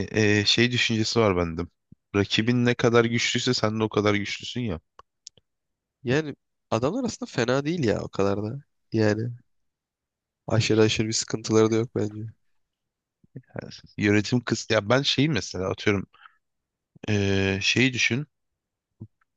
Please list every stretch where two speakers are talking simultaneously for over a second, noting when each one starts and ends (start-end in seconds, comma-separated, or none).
none